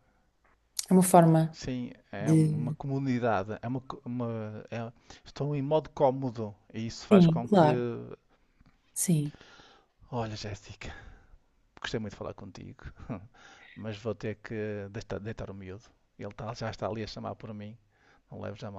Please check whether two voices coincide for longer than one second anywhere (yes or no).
no